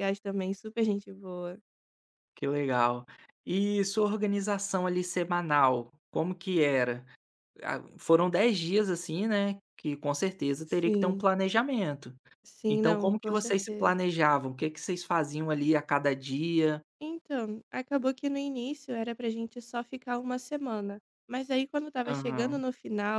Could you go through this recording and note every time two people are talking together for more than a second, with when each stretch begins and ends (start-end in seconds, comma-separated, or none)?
12.7-13.9